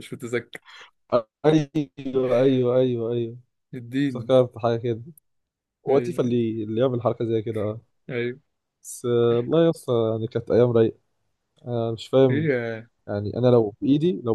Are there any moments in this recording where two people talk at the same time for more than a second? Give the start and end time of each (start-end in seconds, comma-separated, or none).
none